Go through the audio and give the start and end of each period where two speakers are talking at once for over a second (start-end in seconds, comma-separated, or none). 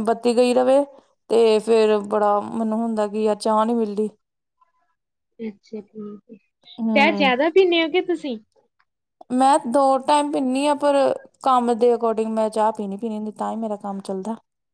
none